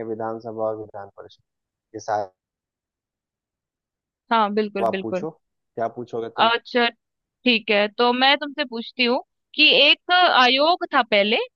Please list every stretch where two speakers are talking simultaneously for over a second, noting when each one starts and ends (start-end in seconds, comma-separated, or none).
none